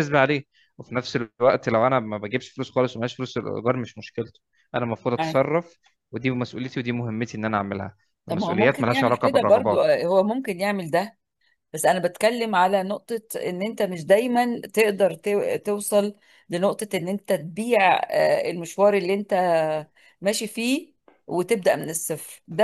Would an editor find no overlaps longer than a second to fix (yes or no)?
no